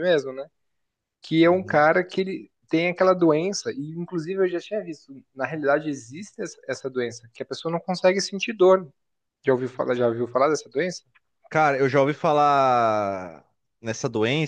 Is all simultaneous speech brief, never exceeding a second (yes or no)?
yes